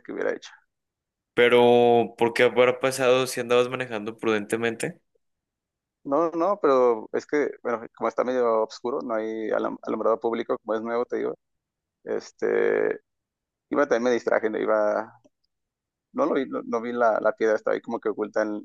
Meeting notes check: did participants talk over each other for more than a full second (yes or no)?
no